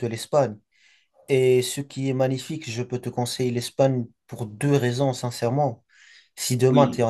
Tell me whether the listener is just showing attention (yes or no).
yes